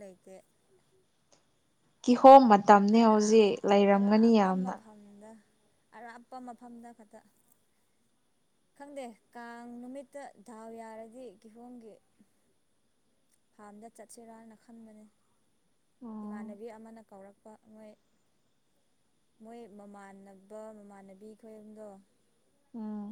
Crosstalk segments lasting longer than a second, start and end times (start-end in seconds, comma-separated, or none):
3.0-4.7